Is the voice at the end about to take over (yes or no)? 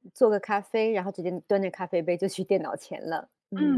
yes